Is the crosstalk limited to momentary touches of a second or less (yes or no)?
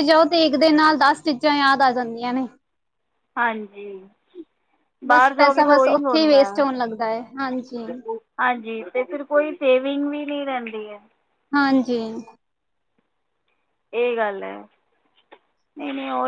no